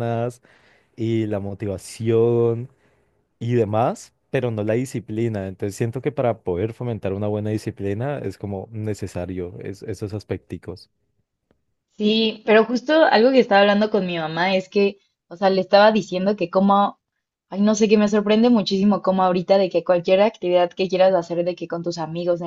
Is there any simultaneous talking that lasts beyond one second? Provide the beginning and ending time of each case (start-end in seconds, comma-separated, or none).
none